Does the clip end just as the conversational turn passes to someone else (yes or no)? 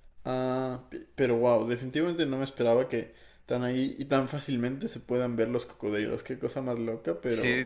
yes